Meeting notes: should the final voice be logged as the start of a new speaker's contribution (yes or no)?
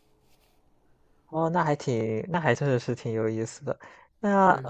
no